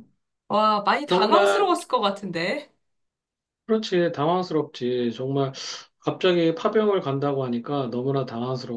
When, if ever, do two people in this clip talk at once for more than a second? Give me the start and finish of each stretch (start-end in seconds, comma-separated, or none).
none